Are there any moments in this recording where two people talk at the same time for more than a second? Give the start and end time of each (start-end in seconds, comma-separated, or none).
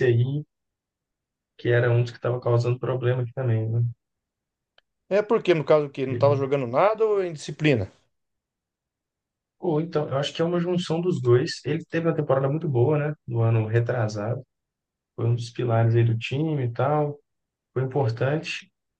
none